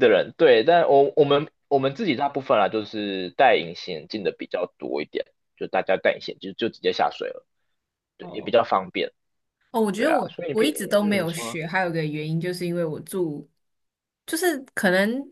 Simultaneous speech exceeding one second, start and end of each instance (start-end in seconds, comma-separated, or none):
10.0-11.6